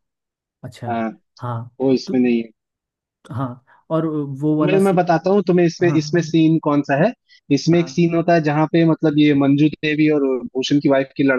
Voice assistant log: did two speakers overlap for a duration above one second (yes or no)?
no